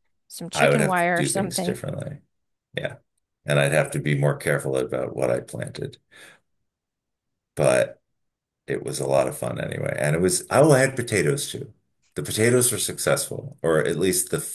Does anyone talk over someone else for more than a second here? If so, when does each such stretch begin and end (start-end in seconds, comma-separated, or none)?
0.5-1.8